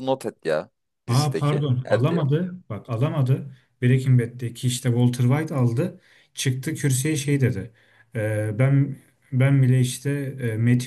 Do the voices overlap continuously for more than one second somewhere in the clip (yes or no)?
yes